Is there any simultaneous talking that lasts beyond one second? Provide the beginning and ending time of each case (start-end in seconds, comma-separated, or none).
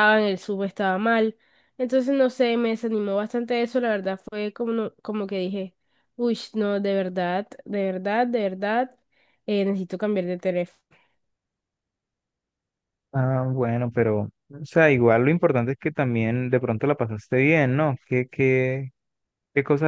none